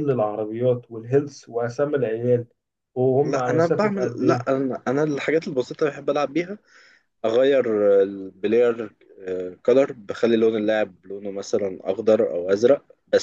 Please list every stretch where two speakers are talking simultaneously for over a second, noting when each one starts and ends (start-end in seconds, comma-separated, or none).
3.2-4.5